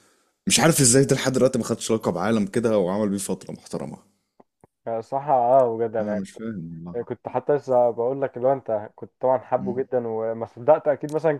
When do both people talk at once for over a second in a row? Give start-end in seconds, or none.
none